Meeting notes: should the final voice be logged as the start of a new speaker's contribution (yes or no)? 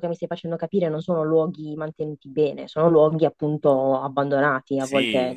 yes